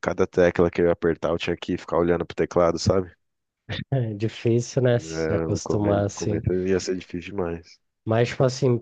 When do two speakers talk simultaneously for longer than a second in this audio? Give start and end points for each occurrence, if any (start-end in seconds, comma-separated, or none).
4.9-6.4